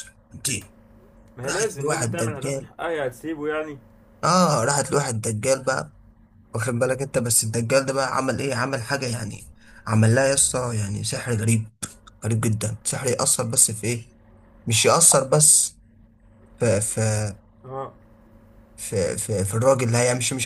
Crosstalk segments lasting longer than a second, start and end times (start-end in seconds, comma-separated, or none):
1.4-2.7